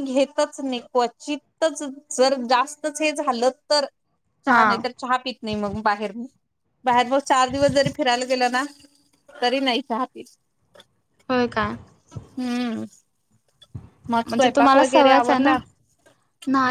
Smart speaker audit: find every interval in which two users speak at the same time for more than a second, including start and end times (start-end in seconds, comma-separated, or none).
14.3-15.5